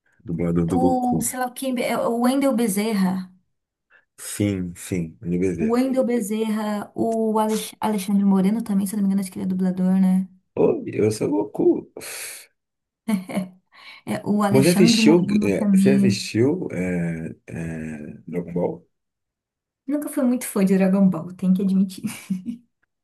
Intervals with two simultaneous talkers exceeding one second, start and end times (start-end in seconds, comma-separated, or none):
14.5-16.0